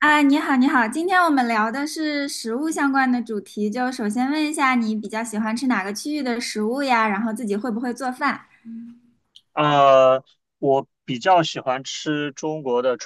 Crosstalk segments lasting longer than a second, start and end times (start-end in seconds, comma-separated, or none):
none